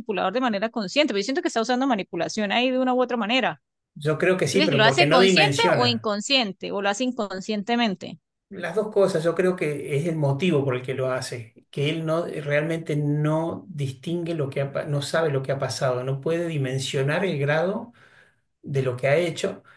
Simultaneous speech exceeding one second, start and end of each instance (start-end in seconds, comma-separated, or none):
4.5-6.1